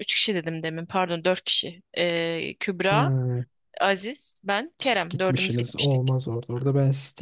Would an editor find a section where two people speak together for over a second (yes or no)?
yes